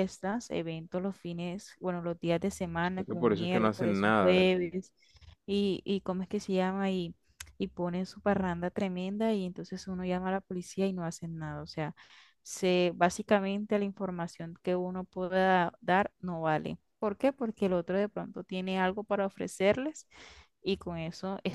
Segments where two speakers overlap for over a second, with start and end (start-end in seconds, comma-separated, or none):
2.8-4.5